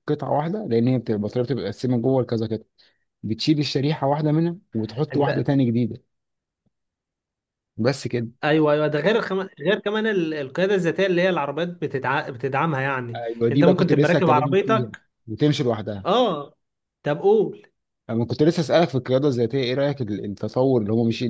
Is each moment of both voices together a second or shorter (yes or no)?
no